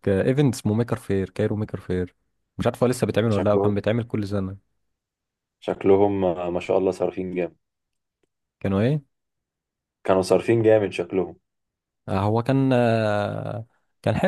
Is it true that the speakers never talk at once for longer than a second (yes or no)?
yes